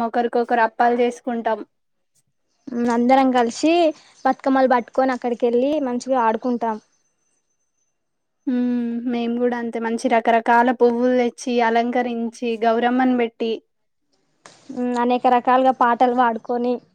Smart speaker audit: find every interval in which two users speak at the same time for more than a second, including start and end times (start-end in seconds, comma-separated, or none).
none